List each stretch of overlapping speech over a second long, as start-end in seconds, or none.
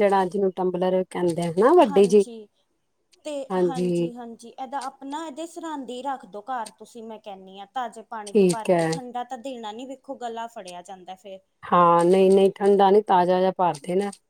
none